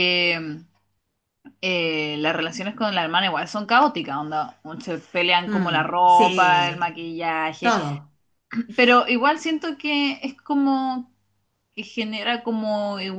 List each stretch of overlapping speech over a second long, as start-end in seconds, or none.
5.5-6.9